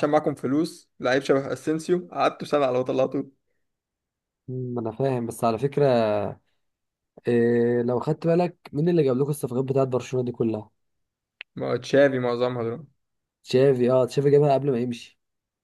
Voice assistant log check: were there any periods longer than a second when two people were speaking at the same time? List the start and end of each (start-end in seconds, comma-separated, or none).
none